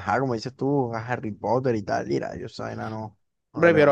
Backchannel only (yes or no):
no